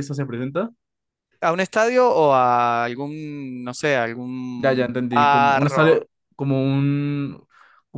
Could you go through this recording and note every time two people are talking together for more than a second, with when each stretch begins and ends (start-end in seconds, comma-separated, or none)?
4.6-6.0